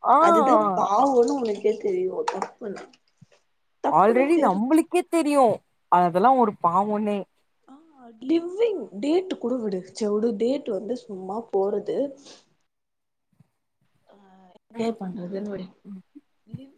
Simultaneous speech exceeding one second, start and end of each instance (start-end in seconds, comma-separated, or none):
none